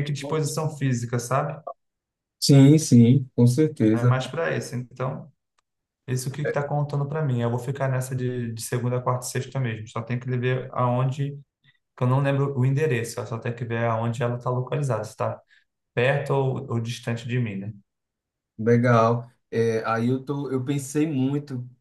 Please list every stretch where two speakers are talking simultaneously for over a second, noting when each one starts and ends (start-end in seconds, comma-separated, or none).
none